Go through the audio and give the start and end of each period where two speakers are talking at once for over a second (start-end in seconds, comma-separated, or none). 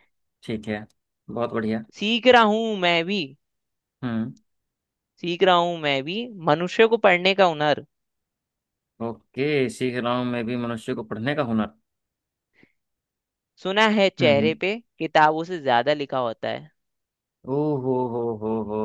none